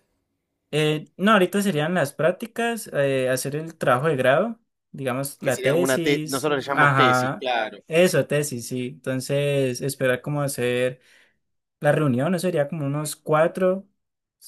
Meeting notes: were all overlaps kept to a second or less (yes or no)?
no